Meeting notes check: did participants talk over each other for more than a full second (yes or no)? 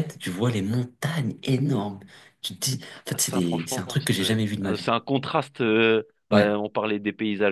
yes